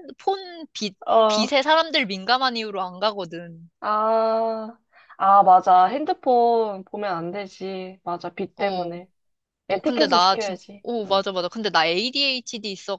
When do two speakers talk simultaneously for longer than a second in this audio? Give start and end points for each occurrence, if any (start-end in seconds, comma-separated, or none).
9.7-11.2